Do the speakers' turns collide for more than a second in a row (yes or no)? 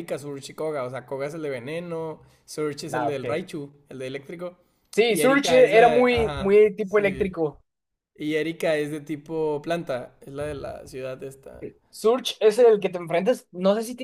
yes